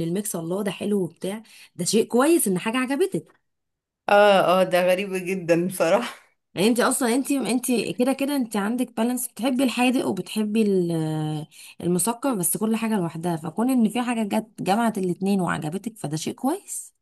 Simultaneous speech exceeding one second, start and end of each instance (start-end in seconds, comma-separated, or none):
none